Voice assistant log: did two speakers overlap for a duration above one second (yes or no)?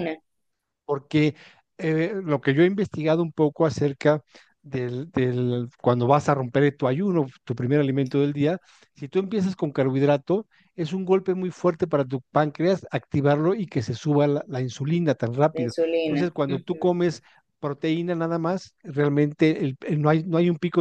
yes